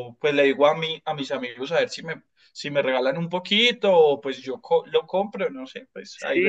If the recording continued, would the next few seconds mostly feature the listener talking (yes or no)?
yes